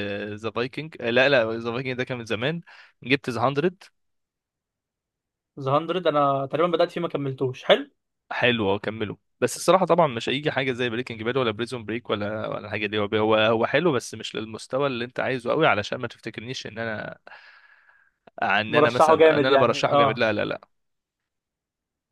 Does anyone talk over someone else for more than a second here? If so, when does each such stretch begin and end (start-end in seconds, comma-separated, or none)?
18.7-20.3